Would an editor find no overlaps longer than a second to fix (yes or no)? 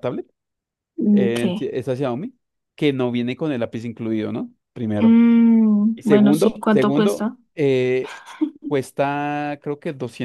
no